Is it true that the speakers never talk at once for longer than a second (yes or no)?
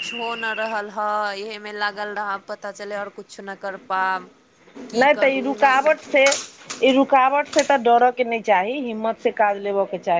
yes